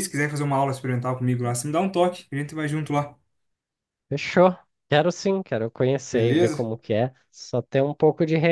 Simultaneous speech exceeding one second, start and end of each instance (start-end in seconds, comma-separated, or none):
none